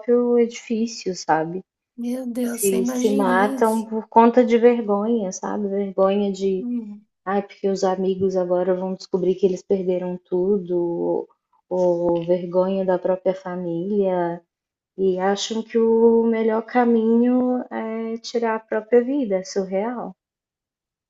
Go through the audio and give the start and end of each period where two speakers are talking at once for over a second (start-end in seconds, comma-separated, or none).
2.4-3.8